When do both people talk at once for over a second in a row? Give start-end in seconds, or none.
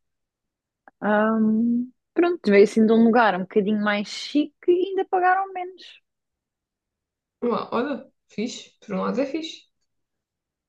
none